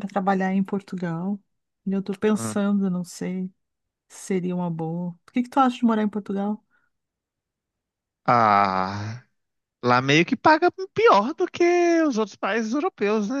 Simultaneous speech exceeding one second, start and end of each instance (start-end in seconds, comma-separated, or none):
none